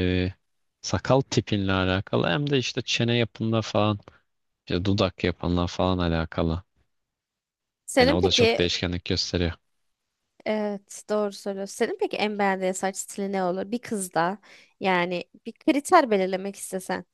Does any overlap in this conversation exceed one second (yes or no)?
no